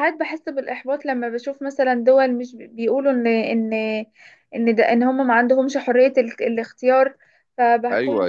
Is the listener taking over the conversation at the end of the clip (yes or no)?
yes